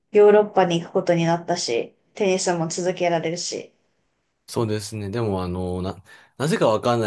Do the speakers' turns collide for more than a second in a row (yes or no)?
no